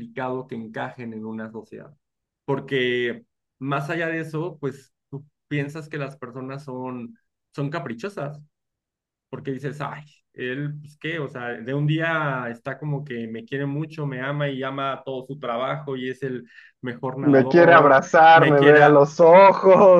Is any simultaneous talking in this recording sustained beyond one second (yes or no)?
yes